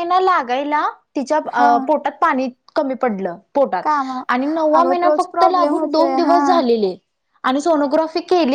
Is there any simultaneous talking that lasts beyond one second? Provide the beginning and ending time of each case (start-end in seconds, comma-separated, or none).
4.8-6.4